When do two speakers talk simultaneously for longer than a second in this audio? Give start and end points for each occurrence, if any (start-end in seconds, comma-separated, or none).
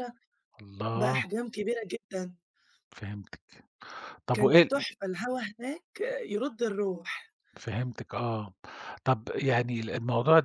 none